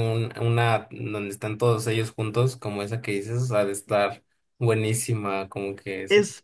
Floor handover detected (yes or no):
yes